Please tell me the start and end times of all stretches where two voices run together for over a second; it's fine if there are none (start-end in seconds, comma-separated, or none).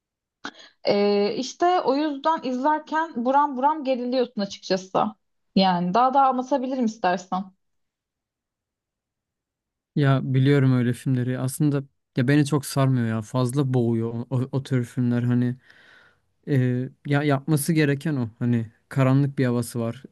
none